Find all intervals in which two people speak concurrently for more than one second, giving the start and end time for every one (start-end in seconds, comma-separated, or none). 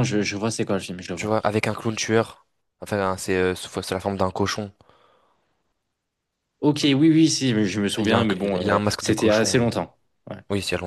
8.0-9.7